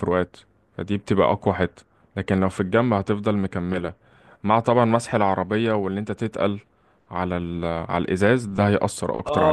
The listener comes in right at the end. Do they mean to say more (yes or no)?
yes